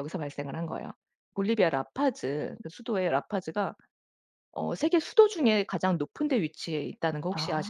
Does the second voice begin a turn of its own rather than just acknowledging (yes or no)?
yes